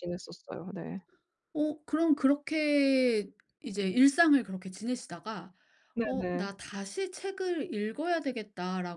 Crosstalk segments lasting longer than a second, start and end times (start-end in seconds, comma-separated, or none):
none